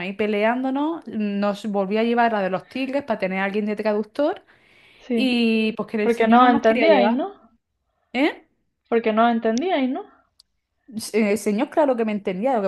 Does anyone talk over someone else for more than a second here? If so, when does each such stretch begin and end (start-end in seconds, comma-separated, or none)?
6.0-7.2